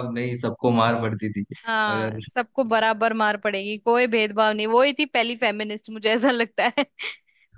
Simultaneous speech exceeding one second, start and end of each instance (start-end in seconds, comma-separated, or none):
none